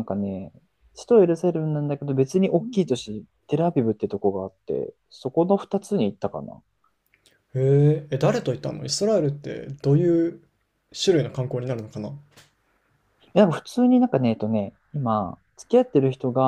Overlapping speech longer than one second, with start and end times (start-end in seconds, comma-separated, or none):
none